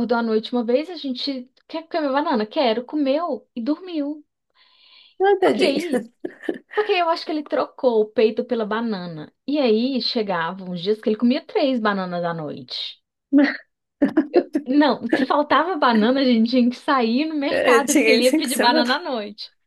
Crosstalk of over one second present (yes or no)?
yes